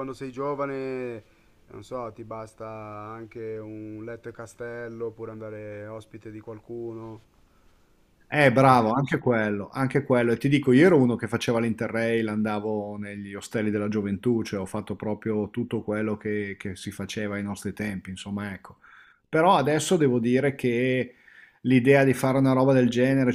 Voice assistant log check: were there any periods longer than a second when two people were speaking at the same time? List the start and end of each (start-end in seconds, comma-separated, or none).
none